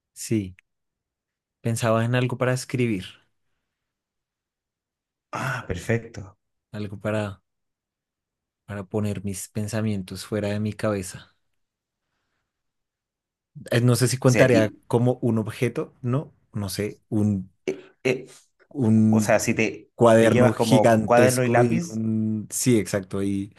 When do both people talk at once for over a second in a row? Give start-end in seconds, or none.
19.9-22.0